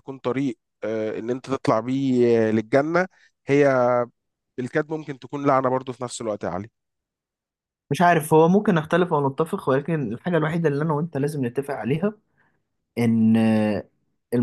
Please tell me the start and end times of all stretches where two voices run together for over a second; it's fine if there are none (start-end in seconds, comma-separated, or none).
none